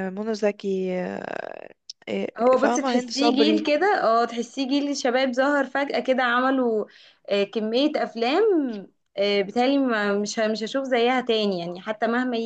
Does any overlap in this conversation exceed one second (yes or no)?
yes